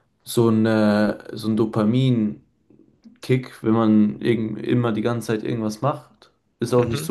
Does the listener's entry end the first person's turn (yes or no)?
no